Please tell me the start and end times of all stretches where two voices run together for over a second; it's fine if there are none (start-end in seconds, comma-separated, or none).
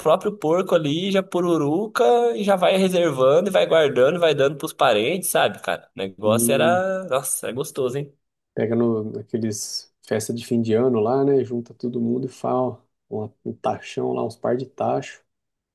none